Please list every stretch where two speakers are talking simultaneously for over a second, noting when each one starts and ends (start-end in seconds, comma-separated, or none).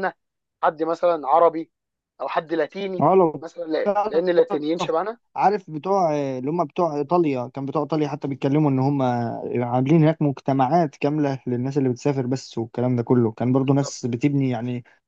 none